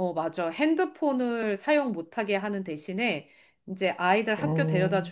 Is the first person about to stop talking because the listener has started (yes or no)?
no